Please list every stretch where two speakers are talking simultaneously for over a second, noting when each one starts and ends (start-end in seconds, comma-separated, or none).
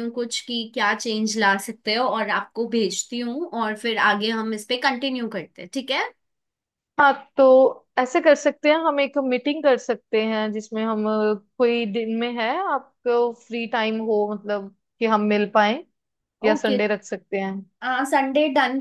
none